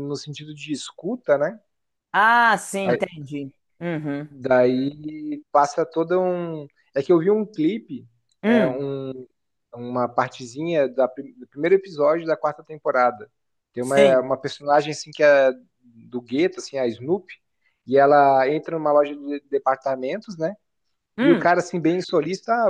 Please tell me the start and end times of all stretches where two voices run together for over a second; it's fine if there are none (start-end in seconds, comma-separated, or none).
none